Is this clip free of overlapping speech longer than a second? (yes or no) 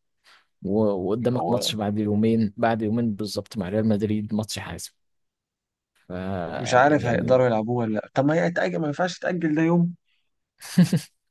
yes